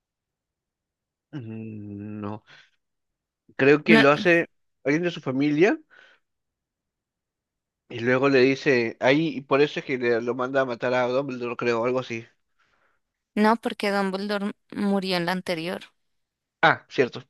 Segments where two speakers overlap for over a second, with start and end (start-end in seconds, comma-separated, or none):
none